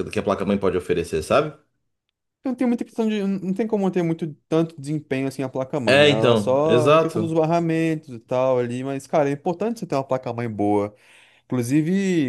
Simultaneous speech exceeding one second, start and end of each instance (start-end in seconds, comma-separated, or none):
5.8-7.3